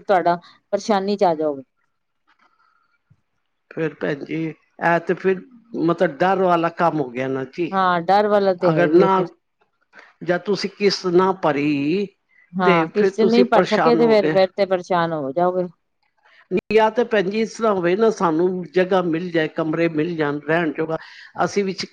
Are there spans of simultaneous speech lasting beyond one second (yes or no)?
yes